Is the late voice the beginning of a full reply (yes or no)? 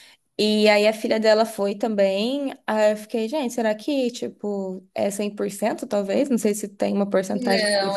yes